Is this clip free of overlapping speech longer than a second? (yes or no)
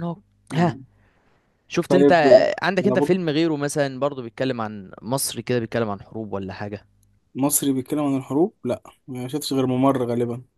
yes